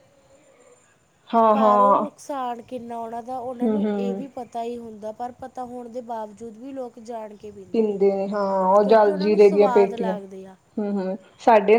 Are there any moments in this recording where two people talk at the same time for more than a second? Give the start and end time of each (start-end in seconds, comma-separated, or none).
8.8-10.2